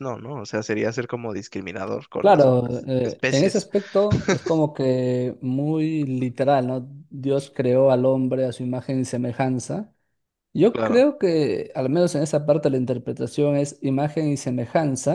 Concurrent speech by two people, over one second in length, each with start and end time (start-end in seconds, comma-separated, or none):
2.2-3.7